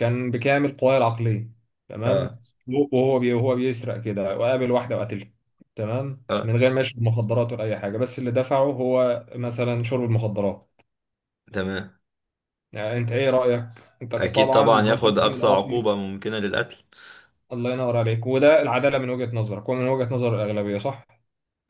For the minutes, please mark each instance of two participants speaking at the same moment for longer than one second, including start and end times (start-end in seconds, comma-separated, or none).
14.2-15.9